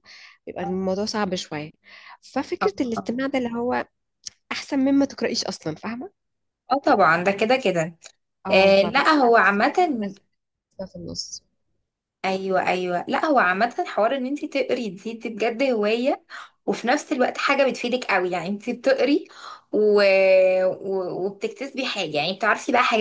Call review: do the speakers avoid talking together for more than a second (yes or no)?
no